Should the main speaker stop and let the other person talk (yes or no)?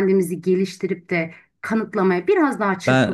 yes